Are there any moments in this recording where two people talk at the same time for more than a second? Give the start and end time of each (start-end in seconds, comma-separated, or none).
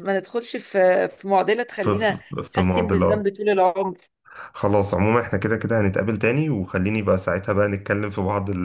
1.8-3.3